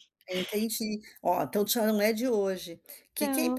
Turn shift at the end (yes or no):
no